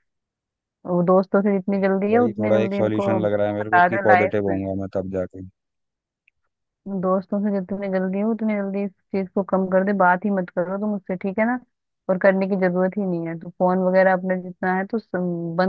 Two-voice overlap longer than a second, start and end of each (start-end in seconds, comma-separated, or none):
1.7-4.6